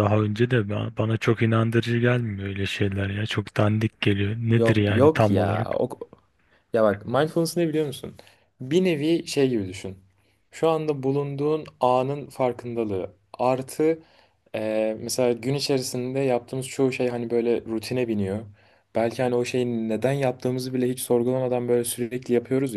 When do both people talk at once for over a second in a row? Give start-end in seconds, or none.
4.5-5.8